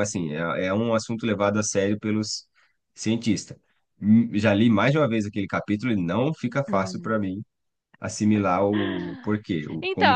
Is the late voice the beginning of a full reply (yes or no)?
yes